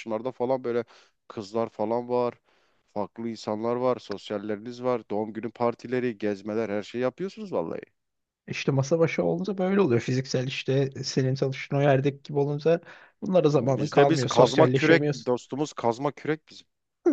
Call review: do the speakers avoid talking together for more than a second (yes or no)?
no